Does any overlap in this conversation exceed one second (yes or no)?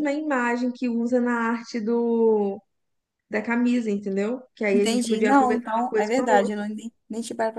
yes